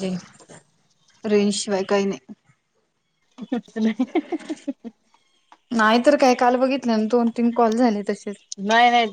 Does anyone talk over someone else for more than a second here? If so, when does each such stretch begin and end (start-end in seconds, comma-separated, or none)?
none